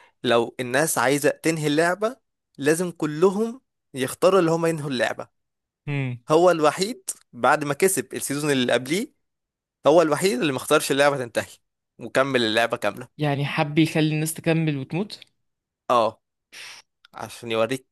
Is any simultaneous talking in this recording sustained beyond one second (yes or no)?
no